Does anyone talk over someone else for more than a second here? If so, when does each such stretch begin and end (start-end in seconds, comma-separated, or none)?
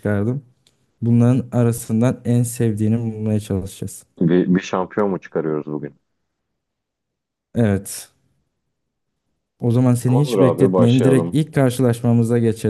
10.1-11.4